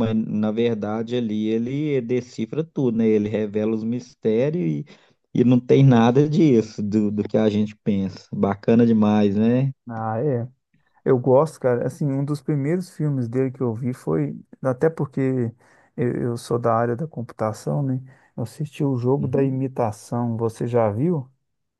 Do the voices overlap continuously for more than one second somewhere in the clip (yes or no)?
no